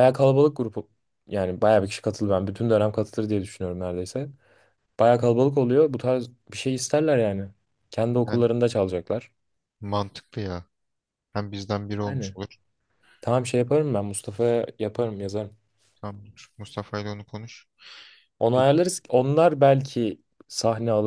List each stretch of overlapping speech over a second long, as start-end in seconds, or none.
none